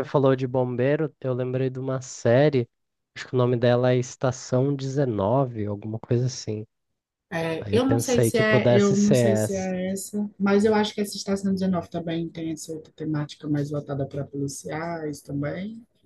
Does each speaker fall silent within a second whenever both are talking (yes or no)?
no